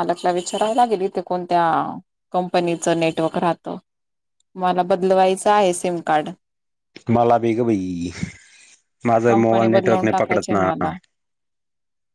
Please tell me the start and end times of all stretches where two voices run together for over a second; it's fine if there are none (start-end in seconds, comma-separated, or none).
9.3-10.7